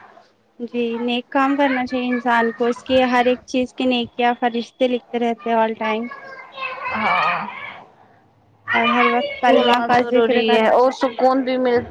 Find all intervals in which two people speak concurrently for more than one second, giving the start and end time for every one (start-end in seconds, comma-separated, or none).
9.5-11.2